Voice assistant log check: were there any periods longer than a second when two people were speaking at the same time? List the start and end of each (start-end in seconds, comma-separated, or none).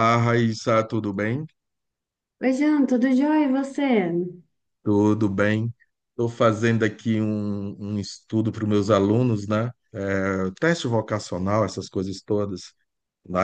none